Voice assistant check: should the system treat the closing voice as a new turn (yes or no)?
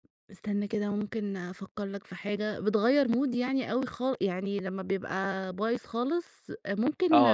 yes